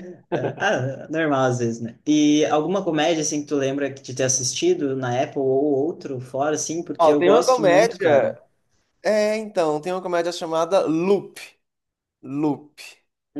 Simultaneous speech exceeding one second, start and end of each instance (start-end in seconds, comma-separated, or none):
7.0-8.3